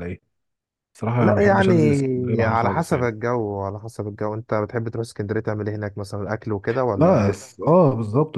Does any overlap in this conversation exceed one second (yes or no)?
yes